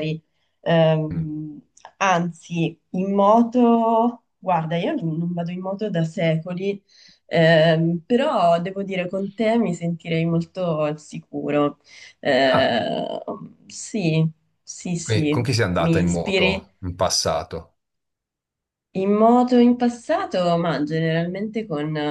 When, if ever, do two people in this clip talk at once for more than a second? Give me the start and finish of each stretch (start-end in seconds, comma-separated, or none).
15.0-16.7